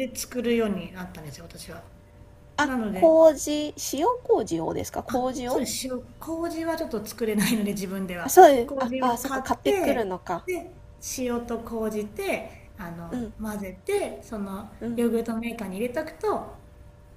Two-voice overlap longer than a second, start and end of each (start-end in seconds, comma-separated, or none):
8.2-10.5